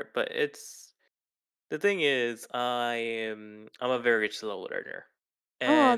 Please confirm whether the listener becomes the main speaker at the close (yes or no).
yes